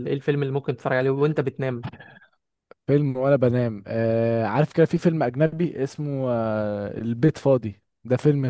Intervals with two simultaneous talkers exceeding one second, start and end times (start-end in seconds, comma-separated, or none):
none